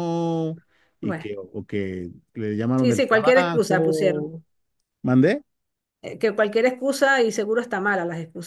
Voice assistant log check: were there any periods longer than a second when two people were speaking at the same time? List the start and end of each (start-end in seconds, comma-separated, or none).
2.8-4.3